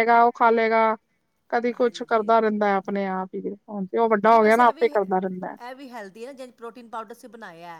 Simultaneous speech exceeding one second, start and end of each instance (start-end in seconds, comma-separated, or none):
none